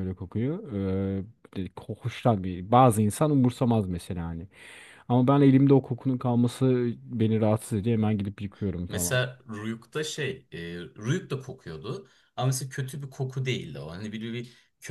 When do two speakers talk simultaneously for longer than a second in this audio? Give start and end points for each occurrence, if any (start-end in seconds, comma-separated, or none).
none